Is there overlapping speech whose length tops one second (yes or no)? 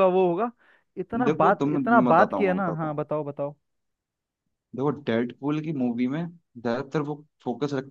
yes